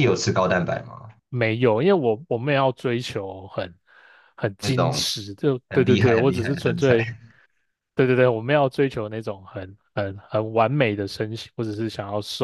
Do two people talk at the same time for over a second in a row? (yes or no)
yes